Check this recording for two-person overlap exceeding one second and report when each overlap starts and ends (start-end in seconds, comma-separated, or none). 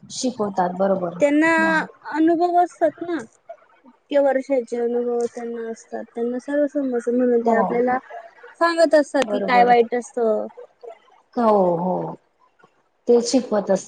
none